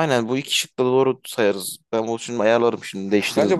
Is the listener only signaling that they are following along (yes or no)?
no